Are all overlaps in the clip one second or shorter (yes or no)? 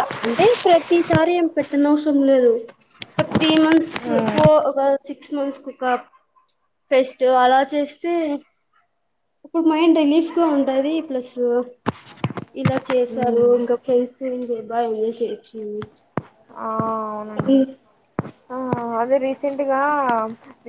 yes